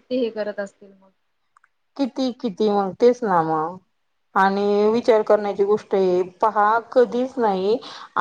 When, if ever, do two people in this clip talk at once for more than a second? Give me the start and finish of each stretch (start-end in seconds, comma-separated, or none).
none